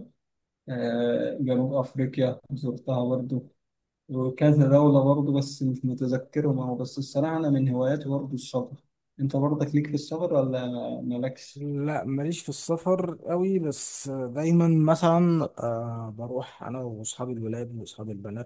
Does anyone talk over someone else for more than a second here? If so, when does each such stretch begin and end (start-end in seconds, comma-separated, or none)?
none